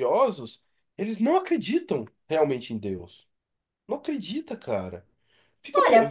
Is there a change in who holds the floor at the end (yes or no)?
yes